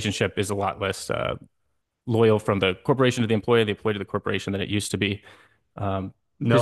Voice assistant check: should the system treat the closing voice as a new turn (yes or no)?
yes